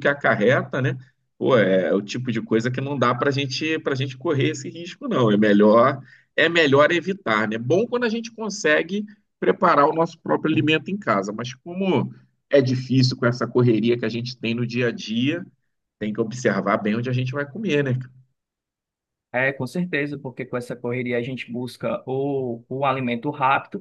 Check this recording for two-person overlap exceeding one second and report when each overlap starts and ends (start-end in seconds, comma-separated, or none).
none